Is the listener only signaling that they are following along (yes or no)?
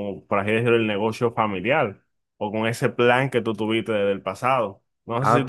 no